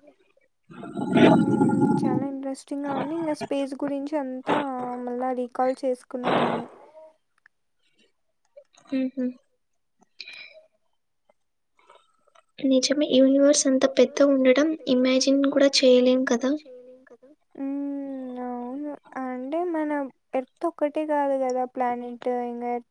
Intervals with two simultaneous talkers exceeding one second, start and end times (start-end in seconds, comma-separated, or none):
13.2-16.5